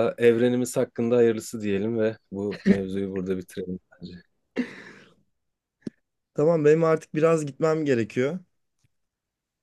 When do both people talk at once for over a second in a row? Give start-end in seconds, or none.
none